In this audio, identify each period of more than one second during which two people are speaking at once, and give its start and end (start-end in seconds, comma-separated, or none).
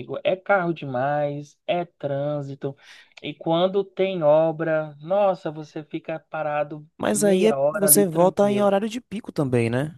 7.0-8.7